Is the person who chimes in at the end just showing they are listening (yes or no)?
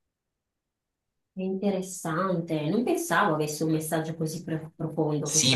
no